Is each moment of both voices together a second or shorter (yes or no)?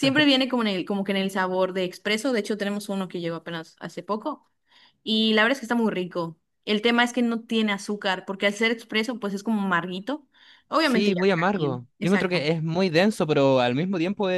no